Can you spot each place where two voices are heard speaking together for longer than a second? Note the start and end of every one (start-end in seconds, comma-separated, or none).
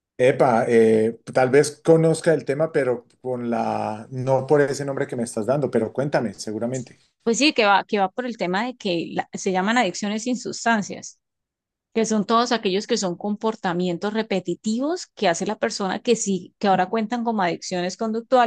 none